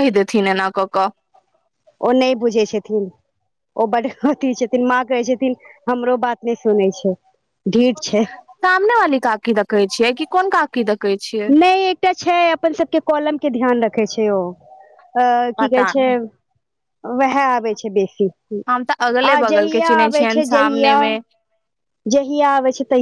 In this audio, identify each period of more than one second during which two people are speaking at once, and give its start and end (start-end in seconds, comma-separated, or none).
18.7-21.0